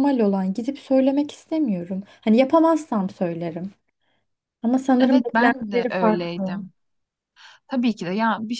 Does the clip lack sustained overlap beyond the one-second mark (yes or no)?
no